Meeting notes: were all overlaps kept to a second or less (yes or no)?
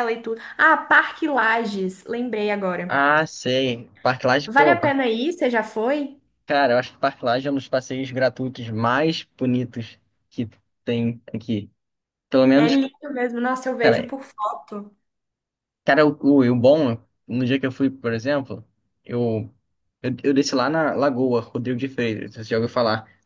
yes